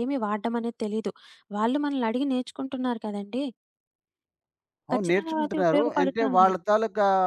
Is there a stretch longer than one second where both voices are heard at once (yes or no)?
yes